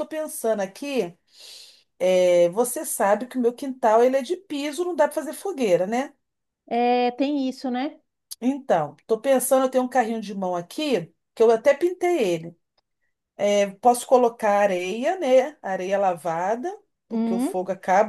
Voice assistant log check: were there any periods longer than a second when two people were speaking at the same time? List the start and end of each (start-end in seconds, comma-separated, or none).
none